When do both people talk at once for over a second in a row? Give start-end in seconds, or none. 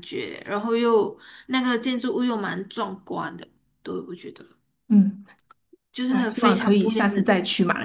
6.0-7.2